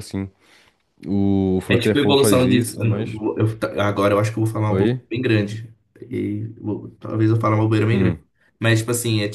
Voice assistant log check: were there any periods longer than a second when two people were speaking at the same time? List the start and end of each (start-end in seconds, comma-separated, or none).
1.7-3.2